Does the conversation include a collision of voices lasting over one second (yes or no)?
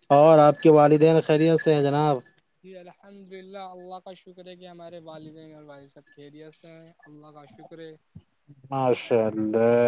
no